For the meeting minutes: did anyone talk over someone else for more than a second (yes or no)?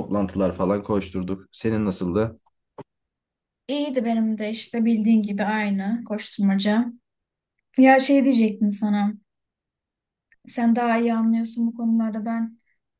no